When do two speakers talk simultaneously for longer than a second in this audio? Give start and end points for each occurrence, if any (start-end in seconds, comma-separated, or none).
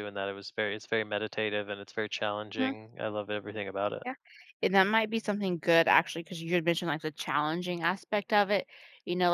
none